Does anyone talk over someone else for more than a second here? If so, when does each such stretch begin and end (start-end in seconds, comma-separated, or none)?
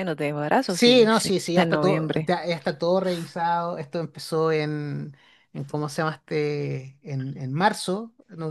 0.7-2.3